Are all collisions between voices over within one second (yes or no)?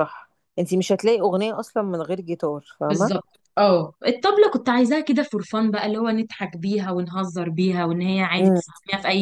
yes